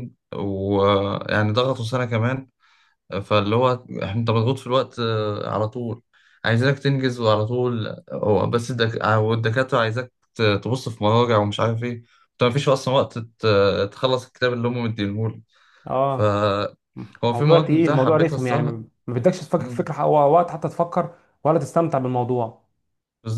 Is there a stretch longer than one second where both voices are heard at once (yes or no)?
yes